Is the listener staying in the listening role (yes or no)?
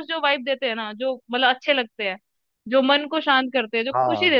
yes